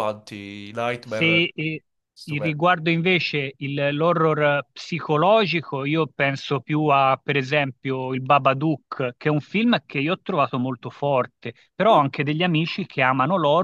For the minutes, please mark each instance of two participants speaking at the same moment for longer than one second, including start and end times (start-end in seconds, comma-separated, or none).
none